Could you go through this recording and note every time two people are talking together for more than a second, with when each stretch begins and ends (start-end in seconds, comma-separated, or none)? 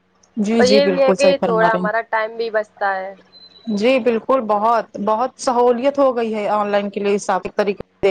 0.6-1.9